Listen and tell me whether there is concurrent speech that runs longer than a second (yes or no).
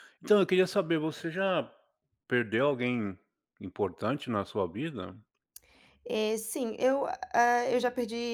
no